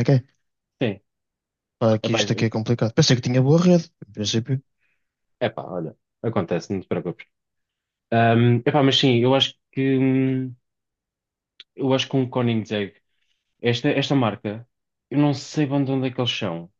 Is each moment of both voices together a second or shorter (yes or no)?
yes